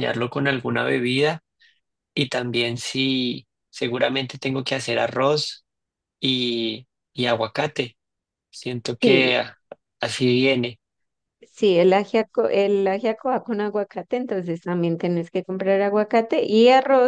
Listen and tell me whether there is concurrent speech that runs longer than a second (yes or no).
no